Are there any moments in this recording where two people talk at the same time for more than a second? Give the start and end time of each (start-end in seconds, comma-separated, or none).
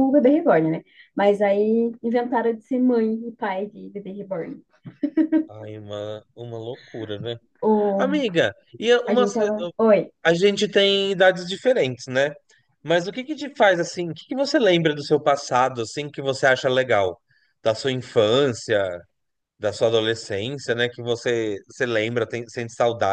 none